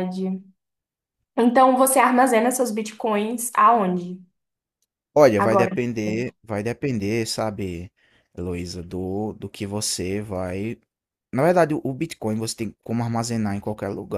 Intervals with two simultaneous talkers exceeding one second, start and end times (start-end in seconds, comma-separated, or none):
none